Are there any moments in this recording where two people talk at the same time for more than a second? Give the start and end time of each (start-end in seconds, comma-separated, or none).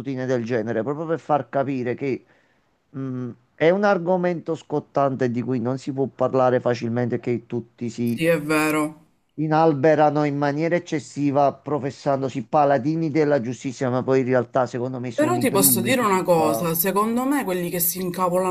15.1-16.7